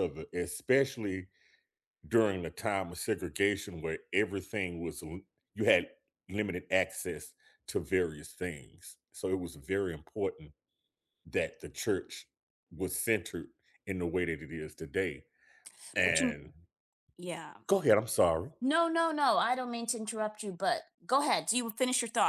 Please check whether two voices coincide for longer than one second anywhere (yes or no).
no